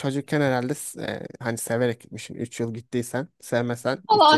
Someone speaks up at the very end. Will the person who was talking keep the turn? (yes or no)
no